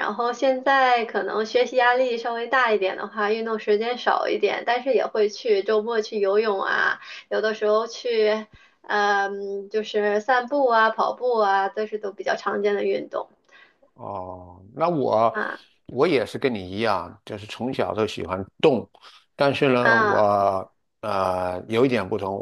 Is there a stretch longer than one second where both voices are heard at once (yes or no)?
no